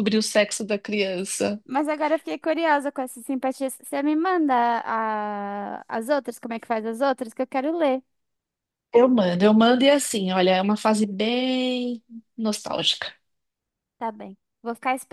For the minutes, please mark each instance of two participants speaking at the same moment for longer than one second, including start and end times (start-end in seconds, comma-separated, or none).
none